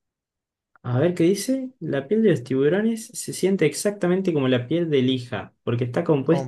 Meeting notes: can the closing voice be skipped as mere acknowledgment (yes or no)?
yes